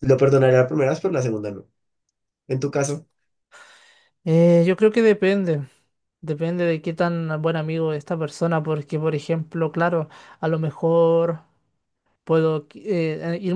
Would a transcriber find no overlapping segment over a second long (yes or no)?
yes